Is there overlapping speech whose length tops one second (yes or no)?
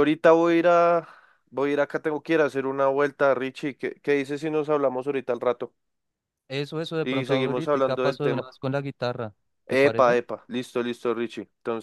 yes